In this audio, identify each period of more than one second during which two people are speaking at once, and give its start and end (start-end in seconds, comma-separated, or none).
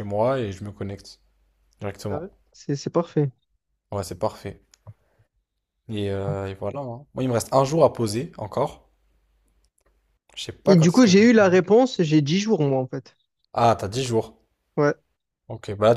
none